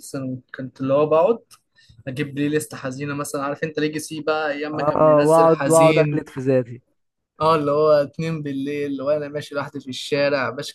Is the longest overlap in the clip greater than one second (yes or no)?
yes